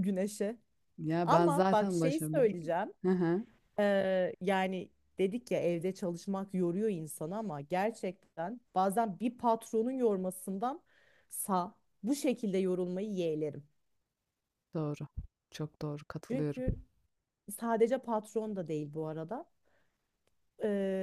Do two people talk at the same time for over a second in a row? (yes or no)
yes